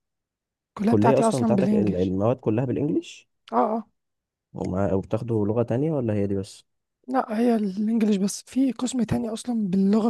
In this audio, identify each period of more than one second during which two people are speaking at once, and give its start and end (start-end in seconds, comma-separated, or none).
0.8-2.1